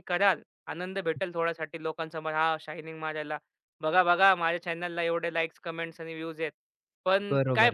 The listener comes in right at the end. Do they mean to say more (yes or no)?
no